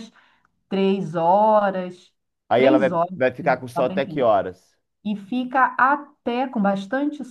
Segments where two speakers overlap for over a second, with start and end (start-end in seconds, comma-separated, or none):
2.5-4.3